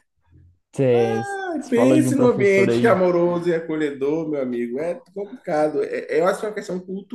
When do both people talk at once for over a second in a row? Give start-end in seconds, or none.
1.7-2.9